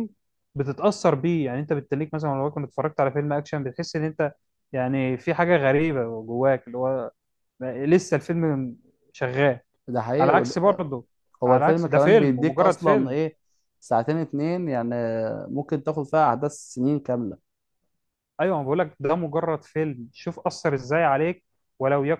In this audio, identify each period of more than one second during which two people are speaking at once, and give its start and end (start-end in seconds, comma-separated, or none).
11.4-13.2